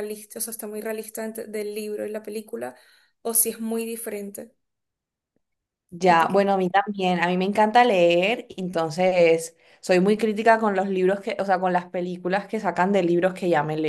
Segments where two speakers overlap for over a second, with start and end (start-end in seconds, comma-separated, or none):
none